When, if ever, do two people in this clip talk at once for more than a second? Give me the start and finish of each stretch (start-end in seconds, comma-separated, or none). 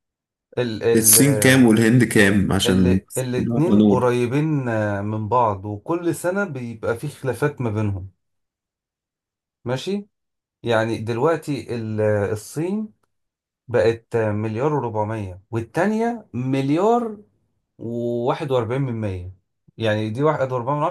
2.7-4.0